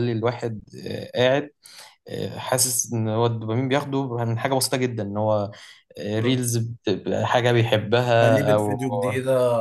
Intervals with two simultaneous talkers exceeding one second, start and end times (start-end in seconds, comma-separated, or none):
none